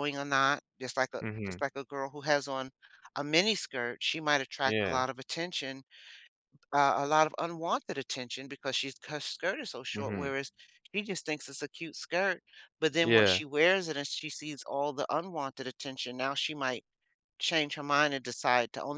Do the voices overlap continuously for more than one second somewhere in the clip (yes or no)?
no